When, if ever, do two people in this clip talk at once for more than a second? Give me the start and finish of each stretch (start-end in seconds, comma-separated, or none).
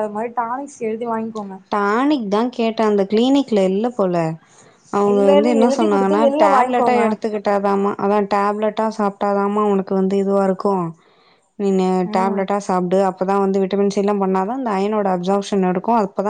5.1-7.0